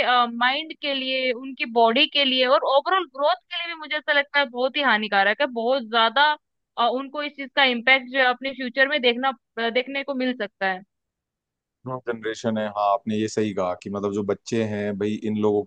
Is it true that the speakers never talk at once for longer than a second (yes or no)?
yes